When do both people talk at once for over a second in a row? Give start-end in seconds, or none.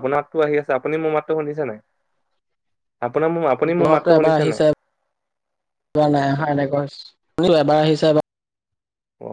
none